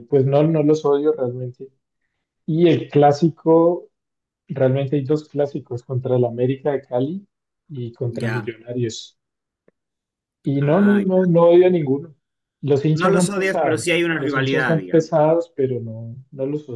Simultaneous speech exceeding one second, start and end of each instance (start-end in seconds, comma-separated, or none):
12.9-15.2